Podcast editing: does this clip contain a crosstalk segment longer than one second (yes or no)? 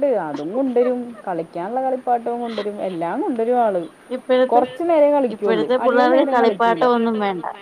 yes